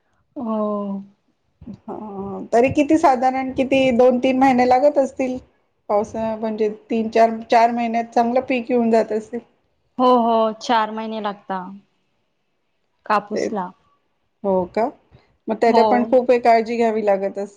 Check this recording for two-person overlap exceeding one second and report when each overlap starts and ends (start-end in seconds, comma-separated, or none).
none